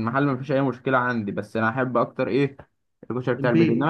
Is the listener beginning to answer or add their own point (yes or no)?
no